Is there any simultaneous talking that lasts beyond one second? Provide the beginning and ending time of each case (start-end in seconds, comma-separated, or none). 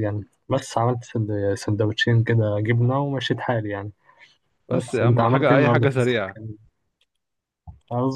4.7-6.3